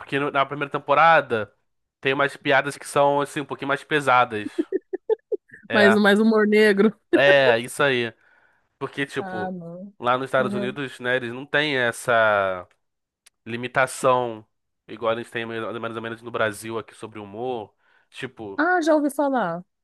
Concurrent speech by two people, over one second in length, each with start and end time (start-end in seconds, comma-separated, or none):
none